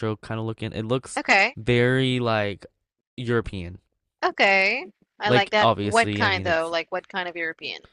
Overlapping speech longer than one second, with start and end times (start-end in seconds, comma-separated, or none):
5.2-6.7